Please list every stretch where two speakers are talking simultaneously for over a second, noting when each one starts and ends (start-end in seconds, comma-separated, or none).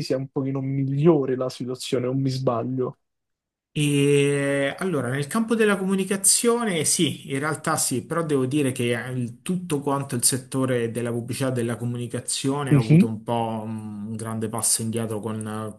none